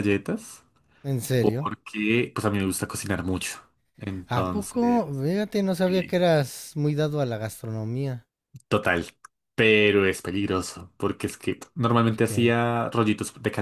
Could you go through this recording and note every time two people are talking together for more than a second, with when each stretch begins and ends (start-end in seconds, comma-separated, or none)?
none